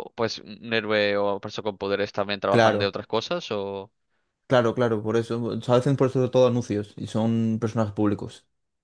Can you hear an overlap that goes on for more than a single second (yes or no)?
no